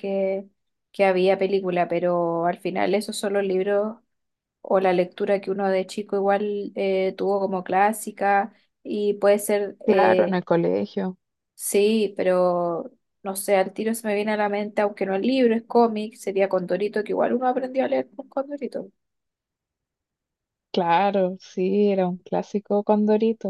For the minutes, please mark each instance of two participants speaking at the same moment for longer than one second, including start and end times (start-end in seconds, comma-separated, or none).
none